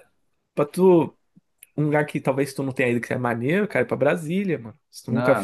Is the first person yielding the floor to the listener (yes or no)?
yes